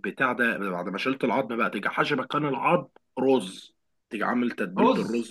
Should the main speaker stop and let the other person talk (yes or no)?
yes